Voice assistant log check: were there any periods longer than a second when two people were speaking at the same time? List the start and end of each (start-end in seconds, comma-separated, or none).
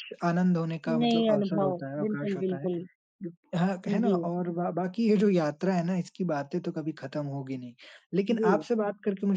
1.0-2.7